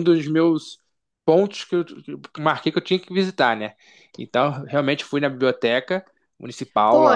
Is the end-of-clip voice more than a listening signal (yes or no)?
yes